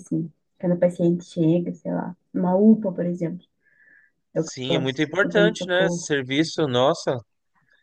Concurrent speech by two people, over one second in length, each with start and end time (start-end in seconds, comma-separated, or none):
4.3-6.1